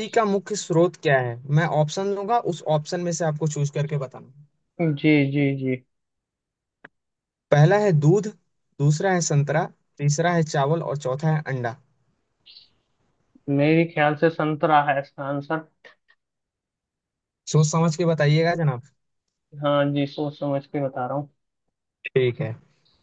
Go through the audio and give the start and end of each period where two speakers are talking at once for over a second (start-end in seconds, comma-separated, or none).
none